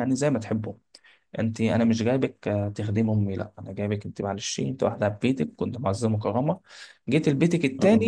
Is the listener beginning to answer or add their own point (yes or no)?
no